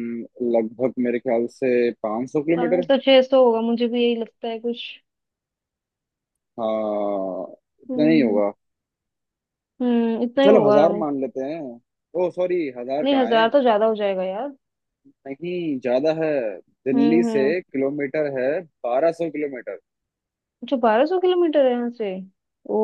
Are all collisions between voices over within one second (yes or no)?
yes